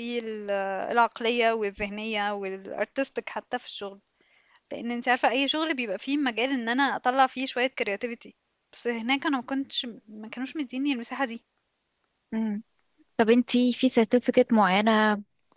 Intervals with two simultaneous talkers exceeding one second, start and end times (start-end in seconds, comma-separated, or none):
none